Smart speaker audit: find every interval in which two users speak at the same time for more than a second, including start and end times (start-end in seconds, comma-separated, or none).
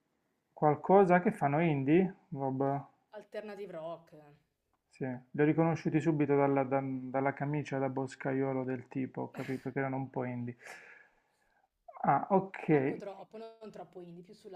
none